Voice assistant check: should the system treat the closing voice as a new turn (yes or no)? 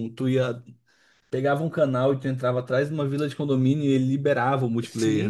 yes